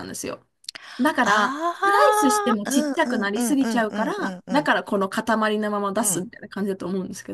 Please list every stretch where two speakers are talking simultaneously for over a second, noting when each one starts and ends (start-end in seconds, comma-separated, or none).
1.2-4.7